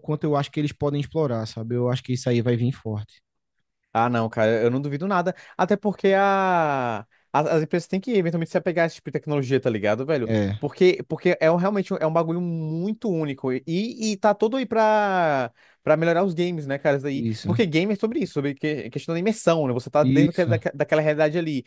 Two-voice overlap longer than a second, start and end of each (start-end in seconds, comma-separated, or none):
none